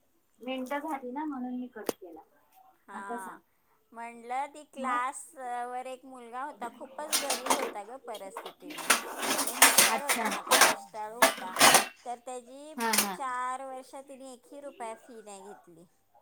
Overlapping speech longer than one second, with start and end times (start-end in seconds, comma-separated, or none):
none